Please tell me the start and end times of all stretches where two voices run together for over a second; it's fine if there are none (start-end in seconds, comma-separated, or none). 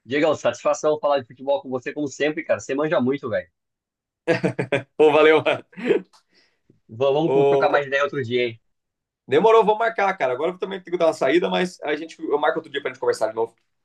none